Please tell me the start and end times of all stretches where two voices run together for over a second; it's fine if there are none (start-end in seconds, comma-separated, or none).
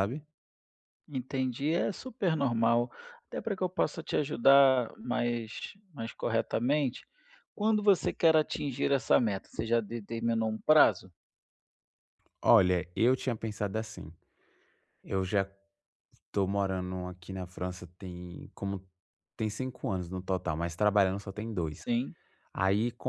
none